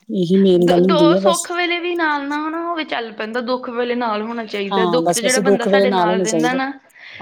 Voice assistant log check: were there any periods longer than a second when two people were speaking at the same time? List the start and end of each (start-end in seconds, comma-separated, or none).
4.7-6.6